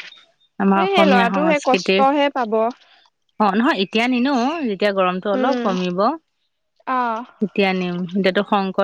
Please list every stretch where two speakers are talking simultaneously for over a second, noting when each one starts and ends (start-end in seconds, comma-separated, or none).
0.6-2.0